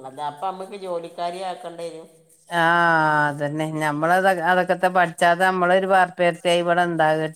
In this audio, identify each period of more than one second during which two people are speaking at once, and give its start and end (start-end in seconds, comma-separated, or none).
none